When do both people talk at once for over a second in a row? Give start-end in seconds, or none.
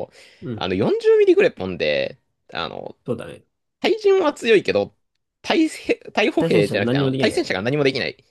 6.4-7.6